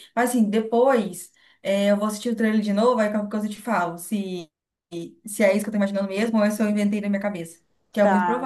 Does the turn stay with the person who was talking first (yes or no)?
no